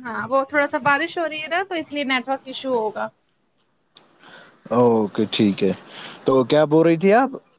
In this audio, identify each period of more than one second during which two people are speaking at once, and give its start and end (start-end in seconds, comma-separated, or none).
none